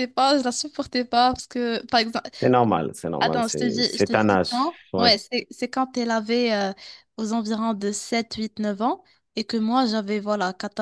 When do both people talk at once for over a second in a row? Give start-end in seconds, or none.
3.2-5.2